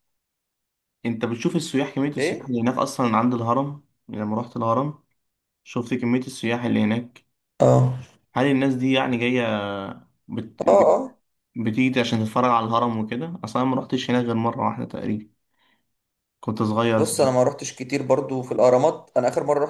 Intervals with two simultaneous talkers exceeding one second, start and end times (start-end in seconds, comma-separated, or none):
none